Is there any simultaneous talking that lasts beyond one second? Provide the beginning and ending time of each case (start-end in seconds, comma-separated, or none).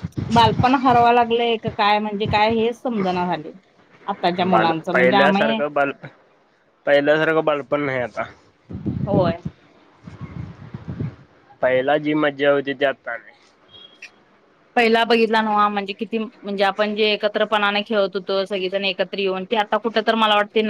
4.4-5.9